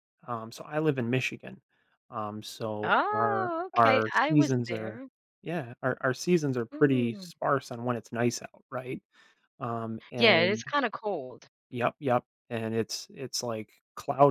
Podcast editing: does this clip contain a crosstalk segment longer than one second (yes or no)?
yes